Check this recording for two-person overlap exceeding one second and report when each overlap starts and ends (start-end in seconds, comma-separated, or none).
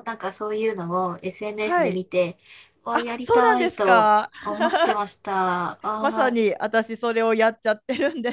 2.9-4.3